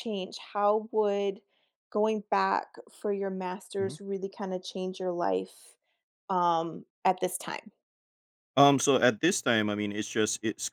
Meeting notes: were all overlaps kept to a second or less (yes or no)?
yes